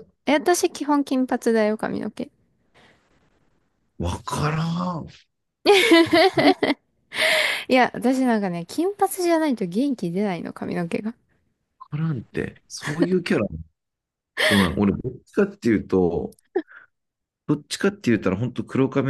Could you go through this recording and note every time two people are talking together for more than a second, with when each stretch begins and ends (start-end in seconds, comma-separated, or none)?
none